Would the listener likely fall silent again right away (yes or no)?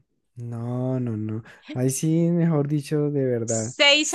no